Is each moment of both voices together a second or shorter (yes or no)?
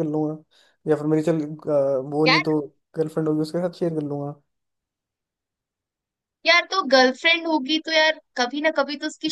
yes